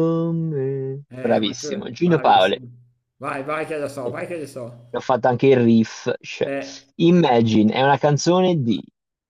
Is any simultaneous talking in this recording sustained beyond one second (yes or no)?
yes